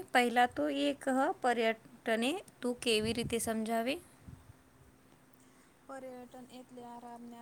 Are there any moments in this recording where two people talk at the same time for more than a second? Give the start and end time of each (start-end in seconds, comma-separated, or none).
none